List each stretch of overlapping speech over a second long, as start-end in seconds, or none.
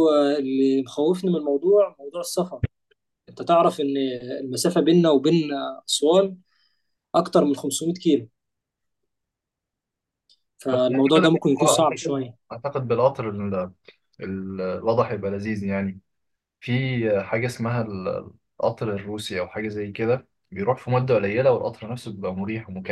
10.7-12.4